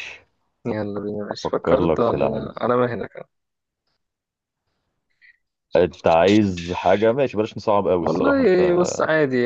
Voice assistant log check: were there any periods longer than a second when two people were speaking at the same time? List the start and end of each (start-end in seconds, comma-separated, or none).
1.3-2.5